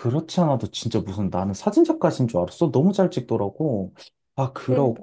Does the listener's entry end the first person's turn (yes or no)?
no